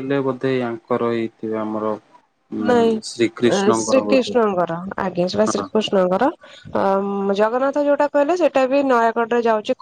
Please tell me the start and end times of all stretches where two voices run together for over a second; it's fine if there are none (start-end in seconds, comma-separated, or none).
3.1-4.3